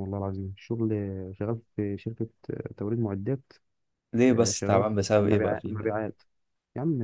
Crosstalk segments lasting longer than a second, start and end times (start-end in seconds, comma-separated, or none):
4.2-5.9